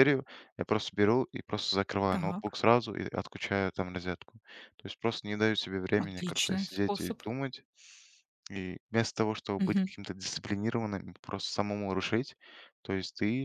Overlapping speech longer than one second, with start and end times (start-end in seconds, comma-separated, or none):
6.0-7.2